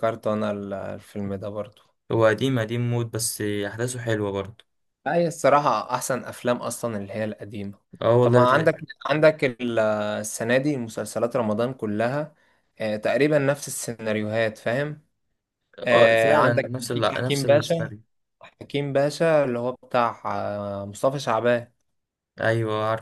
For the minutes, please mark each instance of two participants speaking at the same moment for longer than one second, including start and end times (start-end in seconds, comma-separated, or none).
15.9-17.9